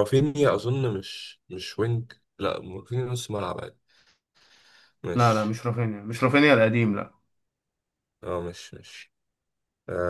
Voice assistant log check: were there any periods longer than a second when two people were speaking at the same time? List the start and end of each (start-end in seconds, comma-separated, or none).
none